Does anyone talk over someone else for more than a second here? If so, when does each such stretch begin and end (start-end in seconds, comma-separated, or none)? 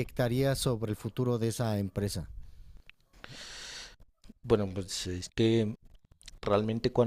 none